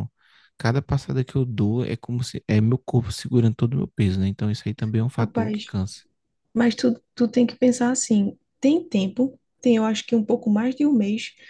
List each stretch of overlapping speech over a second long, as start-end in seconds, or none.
none